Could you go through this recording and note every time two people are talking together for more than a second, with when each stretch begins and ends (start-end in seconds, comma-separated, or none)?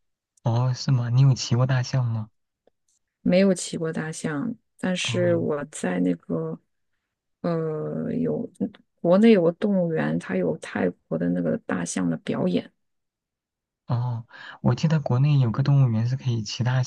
none